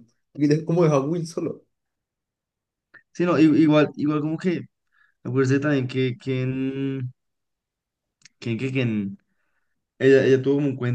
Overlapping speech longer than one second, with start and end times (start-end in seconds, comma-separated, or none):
none